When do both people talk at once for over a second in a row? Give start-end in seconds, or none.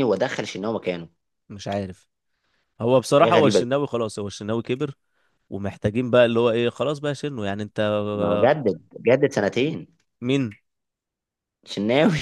none